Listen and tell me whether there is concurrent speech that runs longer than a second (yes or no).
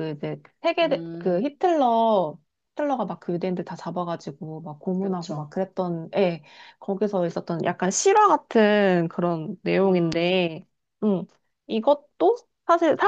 no